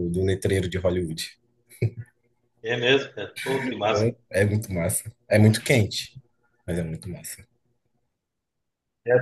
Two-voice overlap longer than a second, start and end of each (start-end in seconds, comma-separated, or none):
none